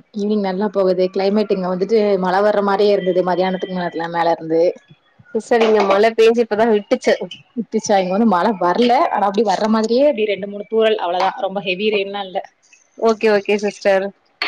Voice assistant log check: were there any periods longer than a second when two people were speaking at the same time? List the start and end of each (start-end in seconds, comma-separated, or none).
none